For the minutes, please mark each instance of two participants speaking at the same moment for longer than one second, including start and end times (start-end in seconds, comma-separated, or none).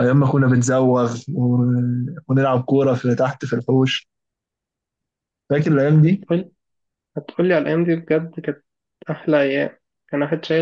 none